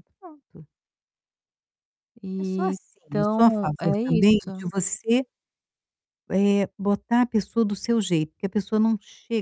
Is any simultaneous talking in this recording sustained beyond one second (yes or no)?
yes